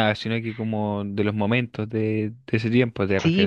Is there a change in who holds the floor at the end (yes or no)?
yes